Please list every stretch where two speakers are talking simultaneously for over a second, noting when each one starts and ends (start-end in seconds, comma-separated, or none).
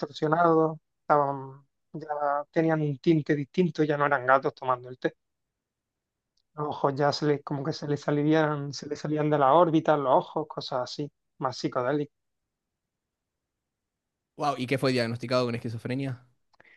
none